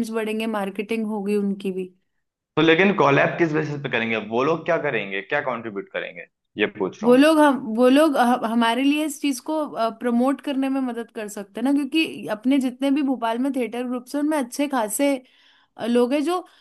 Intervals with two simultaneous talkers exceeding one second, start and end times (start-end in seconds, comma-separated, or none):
none